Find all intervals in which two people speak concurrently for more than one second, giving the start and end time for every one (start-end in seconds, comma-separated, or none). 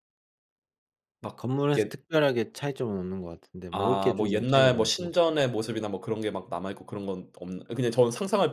3.7-5.1